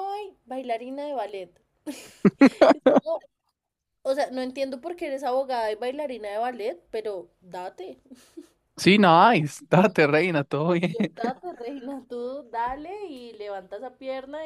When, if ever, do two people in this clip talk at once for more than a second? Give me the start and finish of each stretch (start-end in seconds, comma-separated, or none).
none